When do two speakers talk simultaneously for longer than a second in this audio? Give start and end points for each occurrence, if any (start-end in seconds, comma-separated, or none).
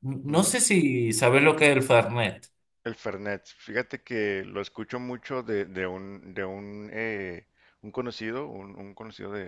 none